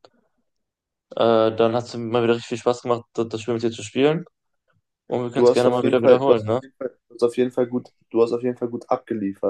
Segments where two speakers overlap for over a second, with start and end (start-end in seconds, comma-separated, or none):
5.3-6.6